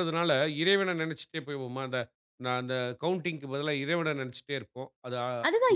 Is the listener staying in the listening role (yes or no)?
no